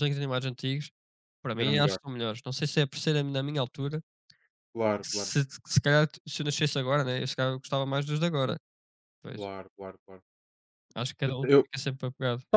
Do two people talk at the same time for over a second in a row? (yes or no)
no